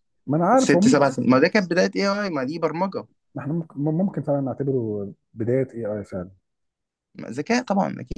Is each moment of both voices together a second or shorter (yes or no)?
yes